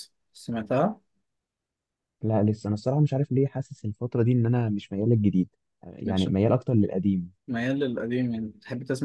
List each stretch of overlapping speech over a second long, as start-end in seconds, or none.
none